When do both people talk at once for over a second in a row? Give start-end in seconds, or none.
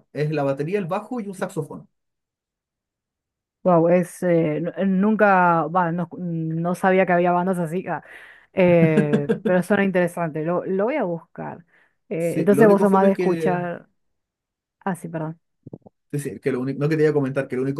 12.2-13.6